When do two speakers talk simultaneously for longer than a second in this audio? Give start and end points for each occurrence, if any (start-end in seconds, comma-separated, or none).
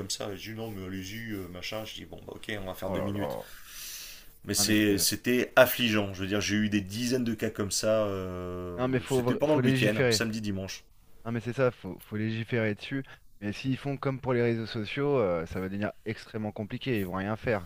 8.7-10.2